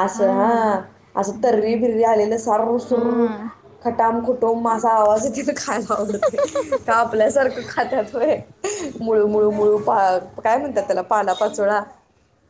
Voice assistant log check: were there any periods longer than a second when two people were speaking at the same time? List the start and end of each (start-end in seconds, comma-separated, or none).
none